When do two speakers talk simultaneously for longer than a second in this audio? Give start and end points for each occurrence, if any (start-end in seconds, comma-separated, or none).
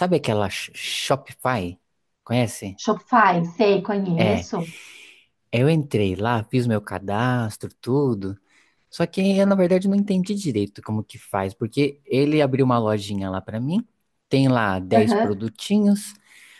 none